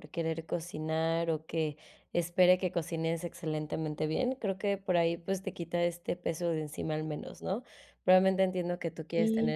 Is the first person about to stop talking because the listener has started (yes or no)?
no